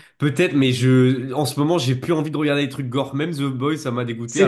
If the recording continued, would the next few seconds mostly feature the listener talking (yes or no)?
yes